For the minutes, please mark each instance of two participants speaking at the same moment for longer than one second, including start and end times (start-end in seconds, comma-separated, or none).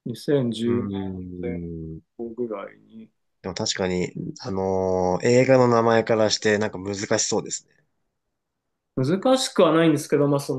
0.6-2.0